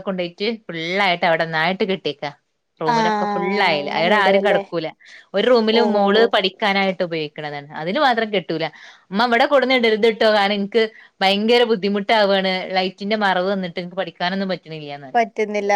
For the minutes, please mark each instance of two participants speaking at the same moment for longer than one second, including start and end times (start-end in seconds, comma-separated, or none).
2.9-4.6